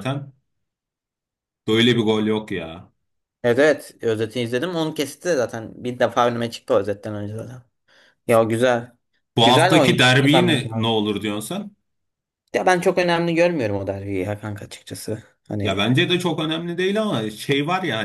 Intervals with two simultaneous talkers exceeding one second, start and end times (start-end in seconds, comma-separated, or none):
9.4-10.9